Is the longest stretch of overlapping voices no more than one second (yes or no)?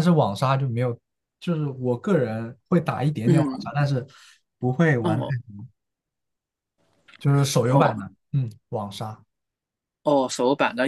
yes